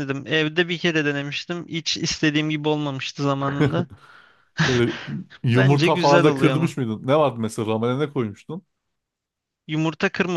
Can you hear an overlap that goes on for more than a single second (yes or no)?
yes